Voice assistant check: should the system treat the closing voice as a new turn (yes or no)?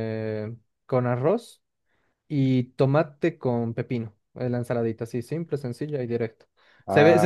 no